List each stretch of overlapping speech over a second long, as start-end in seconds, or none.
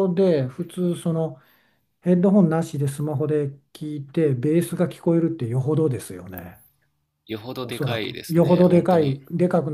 7.6-9.2